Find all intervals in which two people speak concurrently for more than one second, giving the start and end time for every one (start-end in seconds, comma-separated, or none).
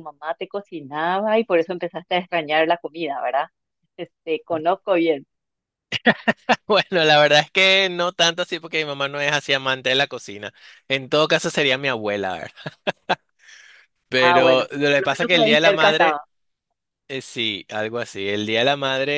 14.2-16.2